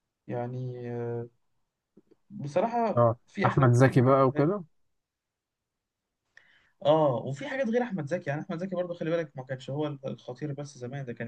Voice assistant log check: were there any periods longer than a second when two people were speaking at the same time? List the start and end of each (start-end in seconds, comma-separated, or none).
3.0-4.5